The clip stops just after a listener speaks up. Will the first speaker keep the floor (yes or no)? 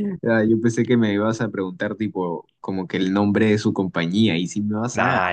no